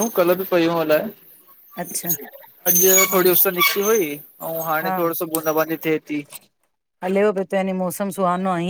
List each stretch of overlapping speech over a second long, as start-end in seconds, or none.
none